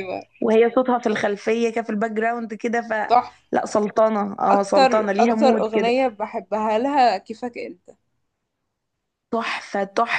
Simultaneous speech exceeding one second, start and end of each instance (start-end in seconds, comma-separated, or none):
4.5-5.9